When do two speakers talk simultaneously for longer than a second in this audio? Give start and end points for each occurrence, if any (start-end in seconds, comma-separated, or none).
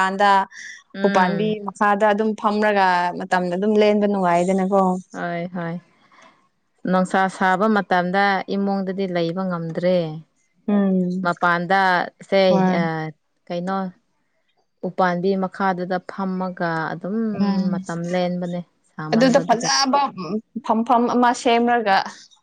none